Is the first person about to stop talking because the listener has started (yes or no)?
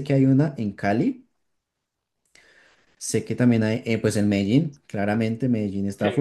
yes